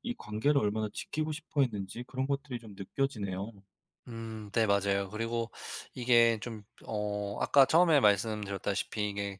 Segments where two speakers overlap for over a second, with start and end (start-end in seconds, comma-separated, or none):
none